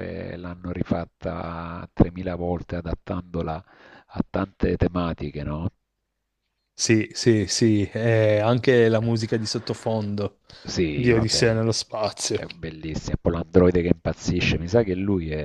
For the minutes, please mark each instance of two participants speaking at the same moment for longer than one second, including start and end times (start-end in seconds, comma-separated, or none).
none